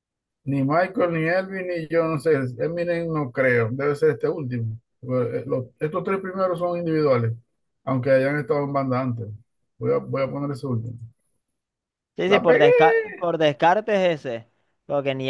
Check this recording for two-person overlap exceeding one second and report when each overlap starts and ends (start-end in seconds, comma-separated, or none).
none